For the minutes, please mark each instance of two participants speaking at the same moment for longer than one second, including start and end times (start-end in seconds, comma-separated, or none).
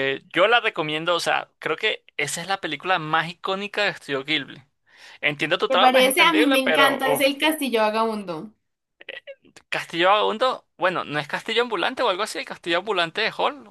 5.7-7.3